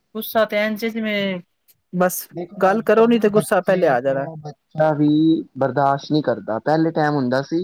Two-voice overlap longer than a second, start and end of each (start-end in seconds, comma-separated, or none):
2.6-4.2